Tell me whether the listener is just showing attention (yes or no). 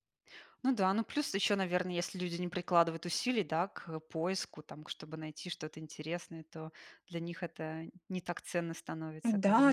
no